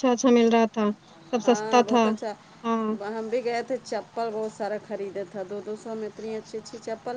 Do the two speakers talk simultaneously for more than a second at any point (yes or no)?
no